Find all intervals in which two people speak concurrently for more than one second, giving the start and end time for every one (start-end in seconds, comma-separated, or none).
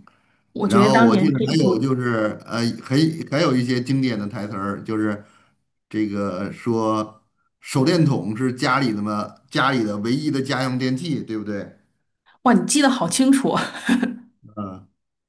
0.6-1.9